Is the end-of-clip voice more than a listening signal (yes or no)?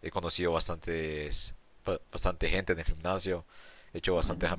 no